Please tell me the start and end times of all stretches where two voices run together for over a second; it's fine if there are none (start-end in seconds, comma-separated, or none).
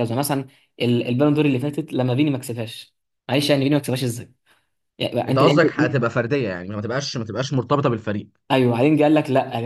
none